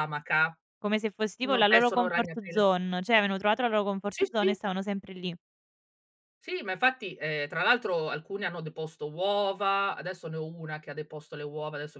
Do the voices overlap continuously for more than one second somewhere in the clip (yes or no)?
yes